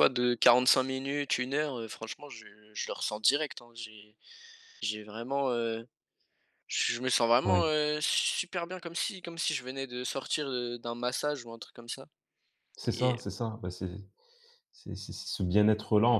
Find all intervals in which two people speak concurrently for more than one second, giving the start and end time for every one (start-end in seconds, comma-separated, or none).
none